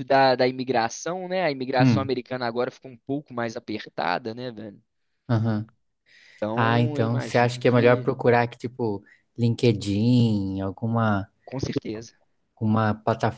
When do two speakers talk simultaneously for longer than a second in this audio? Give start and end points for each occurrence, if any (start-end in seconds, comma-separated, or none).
6.5-8.1